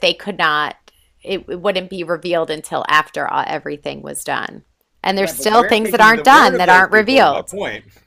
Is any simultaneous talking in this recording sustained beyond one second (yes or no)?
yes